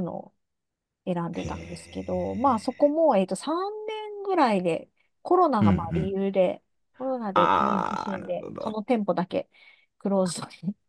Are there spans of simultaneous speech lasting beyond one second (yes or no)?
yes